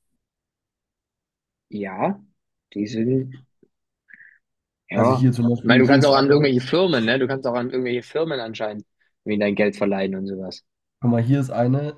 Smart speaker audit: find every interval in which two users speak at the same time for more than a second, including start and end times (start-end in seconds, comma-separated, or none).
4.9-6.5